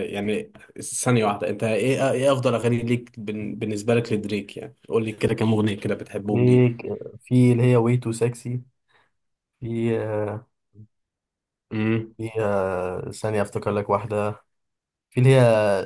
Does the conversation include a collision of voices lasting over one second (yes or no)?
no